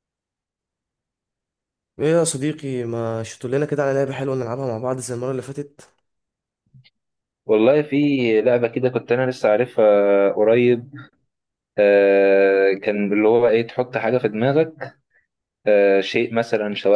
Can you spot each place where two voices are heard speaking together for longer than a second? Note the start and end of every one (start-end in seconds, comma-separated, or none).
none